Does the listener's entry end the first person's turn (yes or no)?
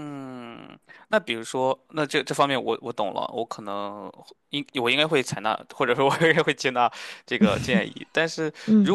no